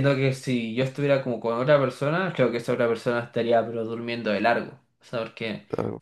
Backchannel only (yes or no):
yes